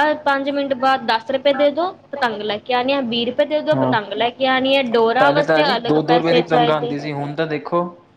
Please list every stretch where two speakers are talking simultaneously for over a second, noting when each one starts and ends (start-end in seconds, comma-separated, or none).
5.2-7.0